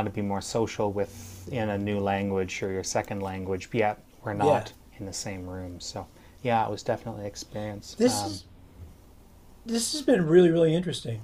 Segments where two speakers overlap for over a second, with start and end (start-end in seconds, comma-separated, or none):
none